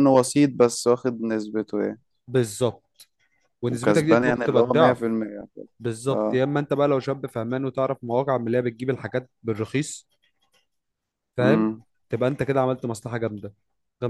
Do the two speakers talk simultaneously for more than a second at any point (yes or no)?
yes